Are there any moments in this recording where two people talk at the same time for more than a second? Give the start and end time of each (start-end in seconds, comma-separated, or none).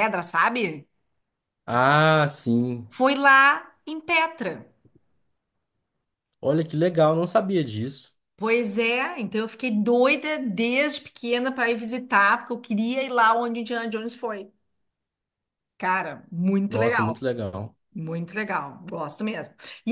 none